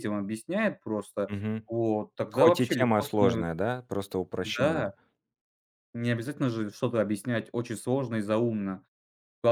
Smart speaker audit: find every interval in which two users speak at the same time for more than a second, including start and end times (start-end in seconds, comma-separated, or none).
2.3-3.5